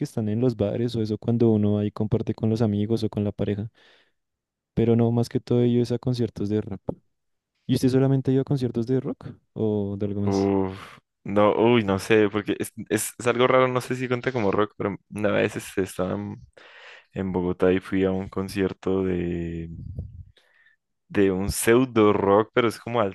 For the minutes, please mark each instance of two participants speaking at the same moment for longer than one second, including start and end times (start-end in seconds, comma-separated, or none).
none